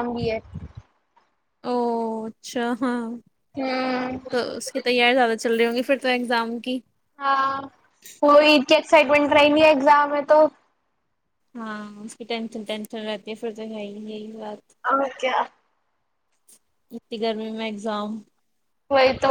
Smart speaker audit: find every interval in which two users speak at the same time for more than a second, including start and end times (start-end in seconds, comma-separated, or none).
none